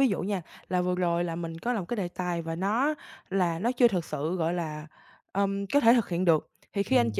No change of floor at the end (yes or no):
yes